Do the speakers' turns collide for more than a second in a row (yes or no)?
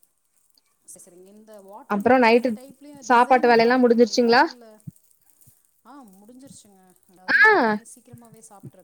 yes